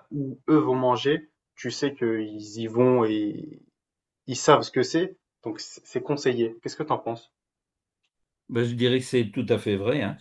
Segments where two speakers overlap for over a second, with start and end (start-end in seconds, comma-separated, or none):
none